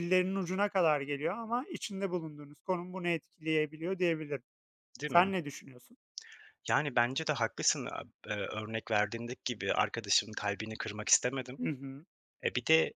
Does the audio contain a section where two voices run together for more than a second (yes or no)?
no